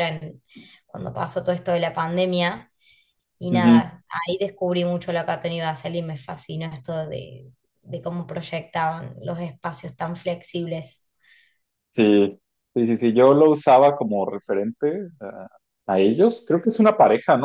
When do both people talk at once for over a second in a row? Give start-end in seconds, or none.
none